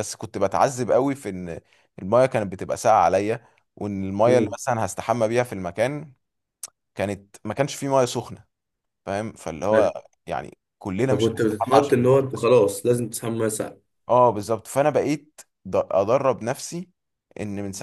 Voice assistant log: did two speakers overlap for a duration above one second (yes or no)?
yes